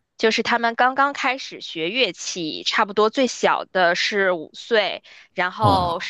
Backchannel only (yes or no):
yes